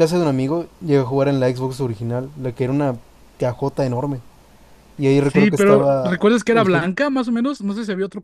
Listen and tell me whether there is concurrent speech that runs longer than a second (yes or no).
yes